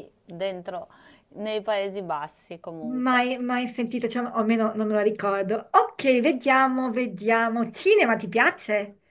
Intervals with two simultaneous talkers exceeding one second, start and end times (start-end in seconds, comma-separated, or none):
none